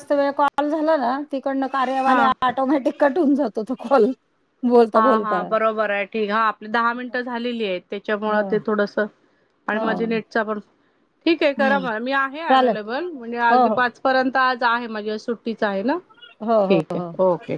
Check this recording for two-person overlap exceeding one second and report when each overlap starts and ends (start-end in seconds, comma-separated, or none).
none